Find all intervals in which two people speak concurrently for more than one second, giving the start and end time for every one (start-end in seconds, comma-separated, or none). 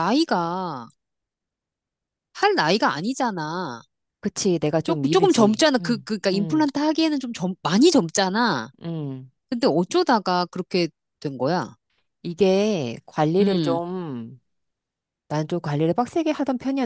4.8-6.7